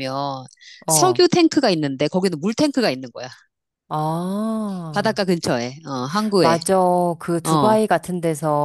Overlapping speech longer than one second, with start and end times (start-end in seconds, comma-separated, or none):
none